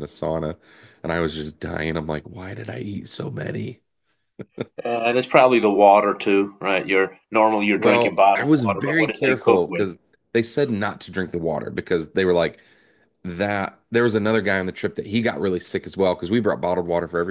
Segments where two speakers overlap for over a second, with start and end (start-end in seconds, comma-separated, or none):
7.8-9.9